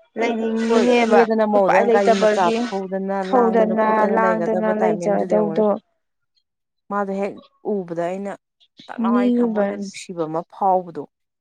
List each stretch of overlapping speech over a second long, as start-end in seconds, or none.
0.7-2.6, 3.2-5.6